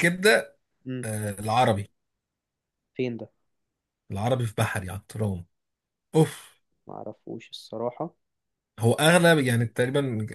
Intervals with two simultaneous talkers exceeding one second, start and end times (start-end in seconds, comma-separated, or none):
none